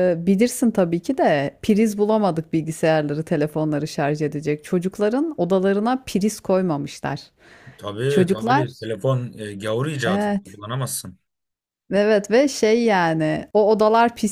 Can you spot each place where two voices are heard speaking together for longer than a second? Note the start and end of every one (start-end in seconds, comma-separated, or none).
none